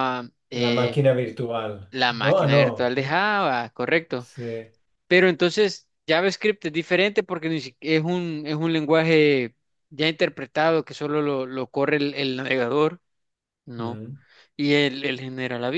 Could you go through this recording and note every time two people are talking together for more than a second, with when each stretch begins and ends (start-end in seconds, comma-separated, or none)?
1.9-3.2